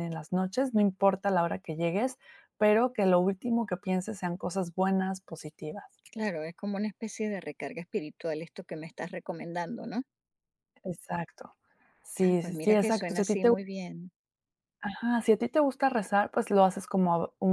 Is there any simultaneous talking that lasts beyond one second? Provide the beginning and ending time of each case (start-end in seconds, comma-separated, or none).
12.2-13.5